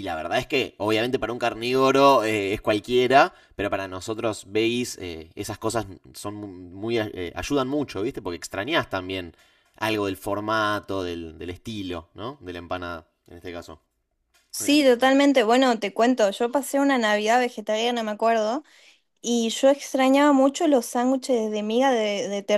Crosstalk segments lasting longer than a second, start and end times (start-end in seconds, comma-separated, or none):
none